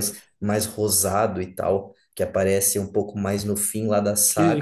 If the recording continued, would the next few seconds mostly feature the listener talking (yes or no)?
yes